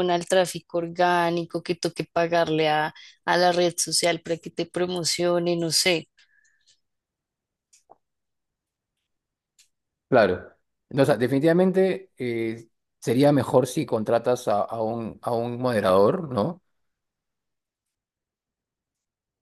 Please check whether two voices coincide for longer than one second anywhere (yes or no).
no